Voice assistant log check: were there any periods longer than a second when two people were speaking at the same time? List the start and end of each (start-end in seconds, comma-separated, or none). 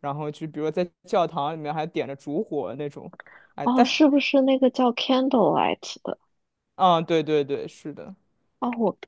none